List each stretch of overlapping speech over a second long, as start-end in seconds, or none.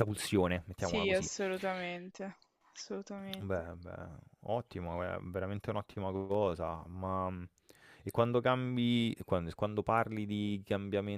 none